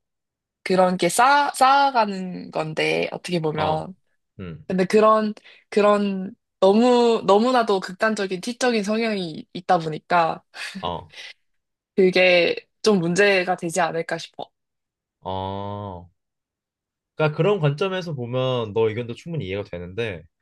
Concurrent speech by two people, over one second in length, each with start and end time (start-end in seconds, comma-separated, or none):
none